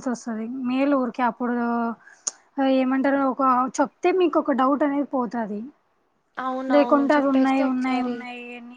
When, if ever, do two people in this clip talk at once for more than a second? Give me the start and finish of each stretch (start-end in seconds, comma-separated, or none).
6.7-8.2